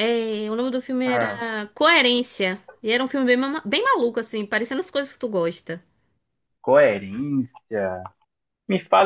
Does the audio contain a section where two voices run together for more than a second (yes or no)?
no